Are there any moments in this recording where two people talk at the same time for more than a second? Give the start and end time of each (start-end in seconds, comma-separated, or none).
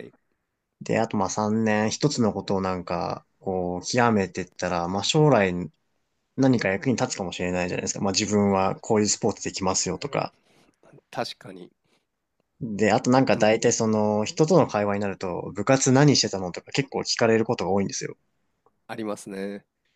none